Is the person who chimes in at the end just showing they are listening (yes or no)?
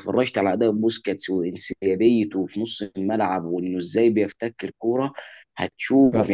yes